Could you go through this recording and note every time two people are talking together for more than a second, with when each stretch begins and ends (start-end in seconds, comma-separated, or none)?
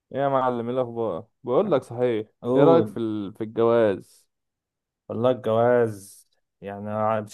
none